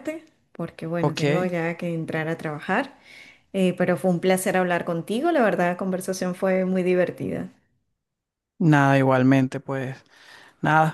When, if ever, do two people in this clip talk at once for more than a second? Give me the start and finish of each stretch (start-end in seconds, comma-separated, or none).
none